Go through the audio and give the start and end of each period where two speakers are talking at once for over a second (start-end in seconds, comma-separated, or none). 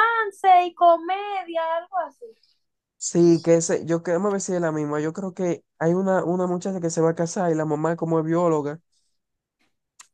none